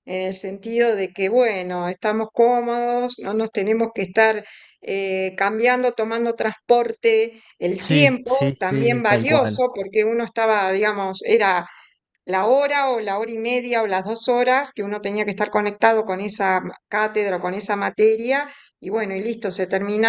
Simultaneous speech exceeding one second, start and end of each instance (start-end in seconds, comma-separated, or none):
7.8-9.6